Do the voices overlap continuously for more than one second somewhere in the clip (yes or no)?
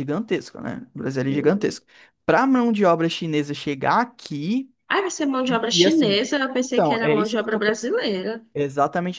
yes